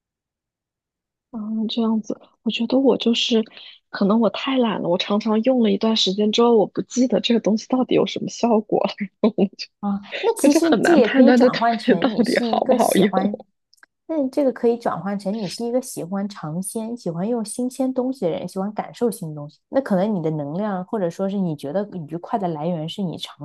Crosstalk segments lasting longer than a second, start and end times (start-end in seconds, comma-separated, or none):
10.4-13.1